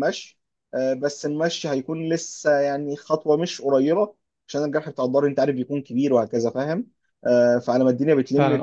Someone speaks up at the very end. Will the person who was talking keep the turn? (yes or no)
no